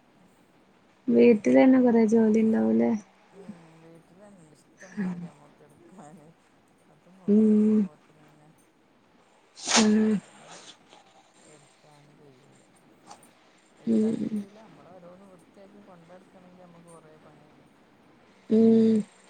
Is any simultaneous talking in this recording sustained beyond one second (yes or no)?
no